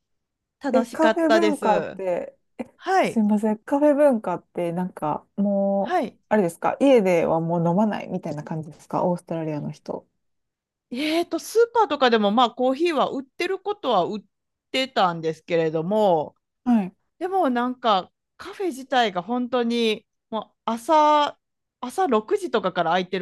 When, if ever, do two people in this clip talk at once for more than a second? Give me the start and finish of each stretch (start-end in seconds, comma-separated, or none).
0.7-2.0